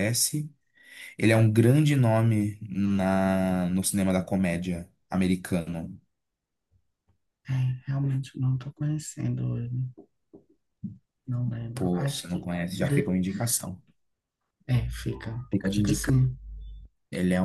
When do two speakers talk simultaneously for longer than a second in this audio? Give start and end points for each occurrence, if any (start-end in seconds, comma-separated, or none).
11.8-13.2